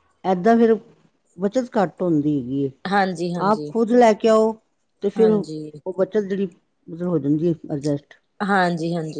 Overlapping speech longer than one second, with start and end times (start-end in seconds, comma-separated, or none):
none